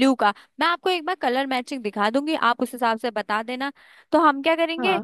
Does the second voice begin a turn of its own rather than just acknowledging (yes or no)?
no